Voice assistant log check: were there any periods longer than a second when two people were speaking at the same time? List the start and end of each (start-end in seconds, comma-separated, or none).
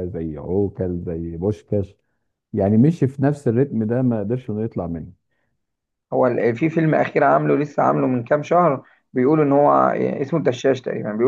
none